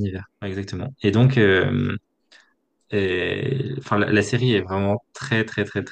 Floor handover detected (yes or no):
no